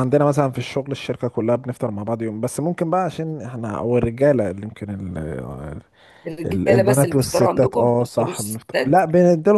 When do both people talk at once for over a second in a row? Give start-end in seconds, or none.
6.5-9.0